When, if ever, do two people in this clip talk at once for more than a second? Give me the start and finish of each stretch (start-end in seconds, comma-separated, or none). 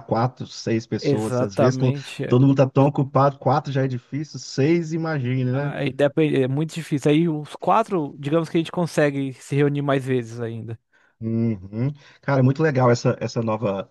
1.0-2.4